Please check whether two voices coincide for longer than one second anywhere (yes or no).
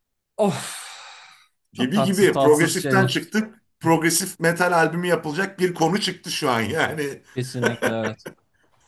yes